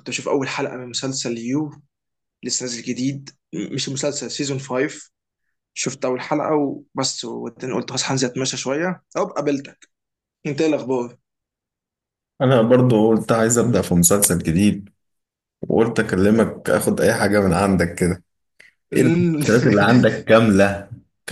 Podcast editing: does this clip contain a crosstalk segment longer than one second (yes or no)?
no